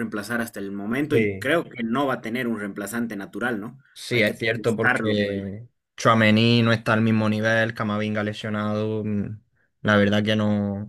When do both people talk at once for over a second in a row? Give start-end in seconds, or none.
3.9-5.5